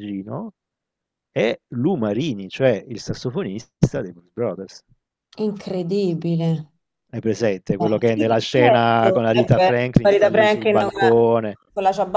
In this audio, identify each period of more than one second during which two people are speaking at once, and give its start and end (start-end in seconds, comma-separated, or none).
7.8-11.3